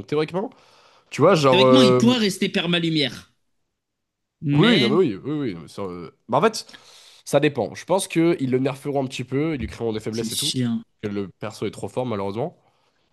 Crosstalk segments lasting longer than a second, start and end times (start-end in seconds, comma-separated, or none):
none